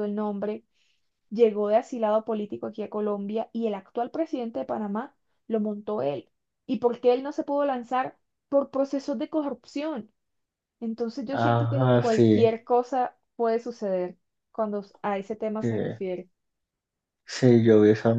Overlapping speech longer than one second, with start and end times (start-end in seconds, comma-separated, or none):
11.3-12.6